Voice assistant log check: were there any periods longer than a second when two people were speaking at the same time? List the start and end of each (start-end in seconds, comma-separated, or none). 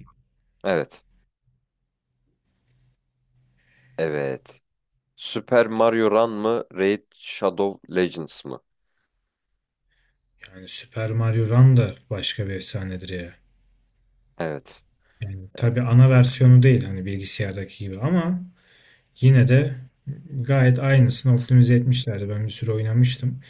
none